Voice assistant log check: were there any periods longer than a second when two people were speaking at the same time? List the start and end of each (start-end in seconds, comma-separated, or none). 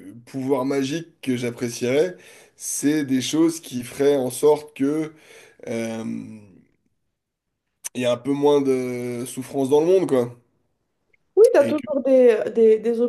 none